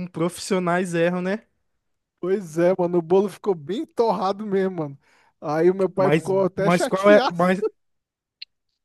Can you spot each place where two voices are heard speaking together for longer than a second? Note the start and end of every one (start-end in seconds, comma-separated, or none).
6.0-7.4